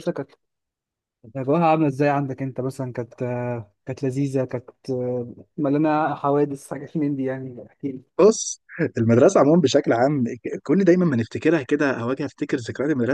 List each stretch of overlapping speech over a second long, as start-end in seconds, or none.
none